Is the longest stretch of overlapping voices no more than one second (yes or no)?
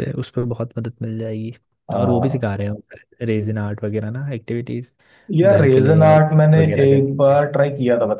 no